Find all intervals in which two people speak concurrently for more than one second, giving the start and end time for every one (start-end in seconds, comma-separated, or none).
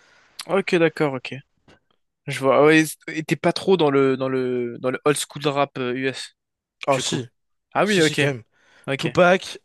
none